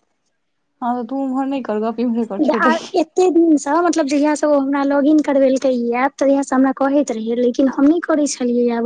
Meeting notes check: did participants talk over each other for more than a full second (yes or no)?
no